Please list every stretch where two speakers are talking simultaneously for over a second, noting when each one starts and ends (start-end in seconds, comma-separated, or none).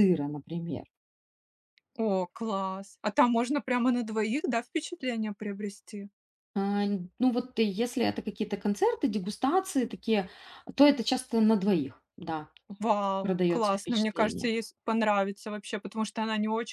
13.2-14.5